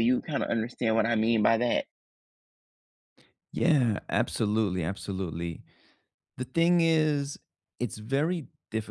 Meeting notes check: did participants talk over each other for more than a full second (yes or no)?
no